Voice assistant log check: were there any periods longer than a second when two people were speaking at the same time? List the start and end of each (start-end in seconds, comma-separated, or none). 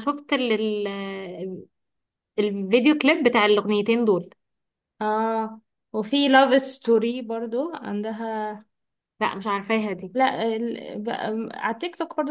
none